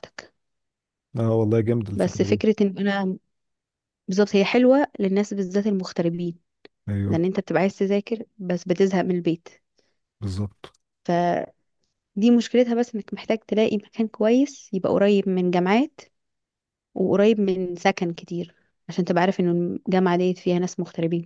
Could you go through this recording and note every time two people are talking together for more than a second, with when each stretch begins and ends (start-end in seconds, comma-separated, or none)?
none